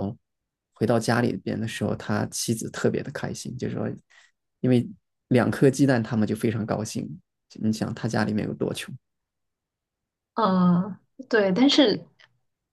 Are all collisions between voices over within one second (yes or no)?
yes